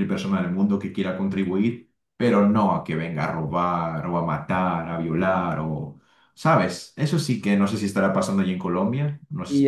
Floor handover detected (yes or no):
yes